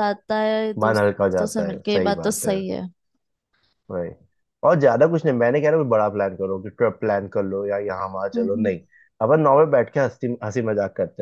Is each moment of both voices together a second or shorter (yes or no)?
no